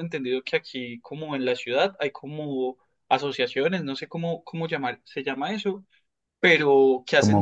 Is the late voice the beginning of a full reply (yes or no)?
no